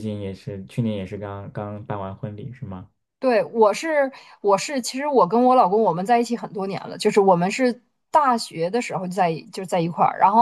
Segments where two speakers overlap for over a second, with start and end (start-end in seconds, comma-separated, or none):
none